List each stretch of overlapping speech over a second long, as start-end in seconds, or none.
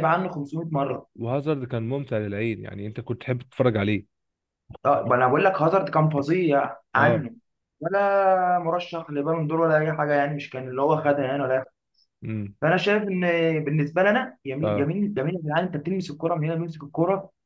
none